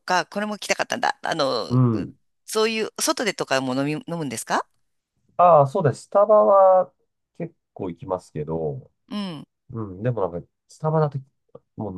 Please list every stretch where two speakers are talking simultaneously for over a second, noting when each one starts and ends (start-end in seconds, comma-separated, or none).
none